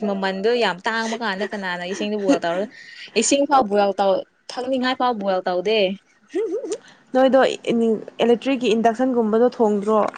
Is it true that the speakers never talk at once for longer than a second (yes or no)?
yes